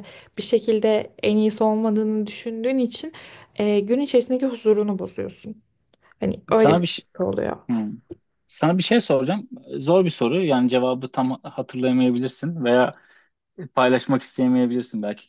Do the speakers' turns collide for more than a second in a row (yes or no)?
no